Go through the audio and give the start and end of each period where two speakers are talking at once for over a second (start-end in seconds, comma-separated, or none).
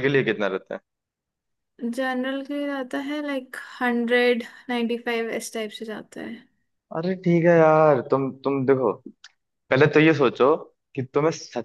none